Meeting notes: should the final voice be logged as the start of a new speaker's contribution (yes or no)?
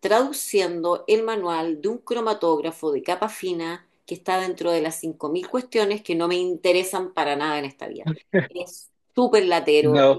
no